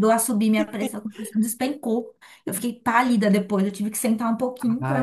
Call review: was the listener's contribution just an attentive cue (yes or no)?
no